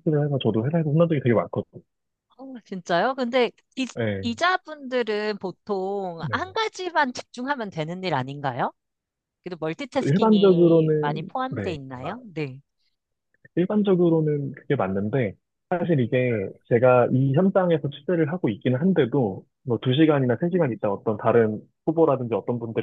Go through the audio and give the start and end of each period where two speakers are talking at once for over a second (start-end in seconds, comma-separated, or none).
10.0-11.8